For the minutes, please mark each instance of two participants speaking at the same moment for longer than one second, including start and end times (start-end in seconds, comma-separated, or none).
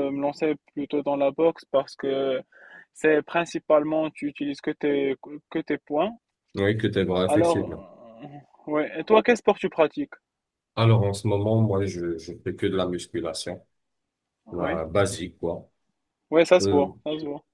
none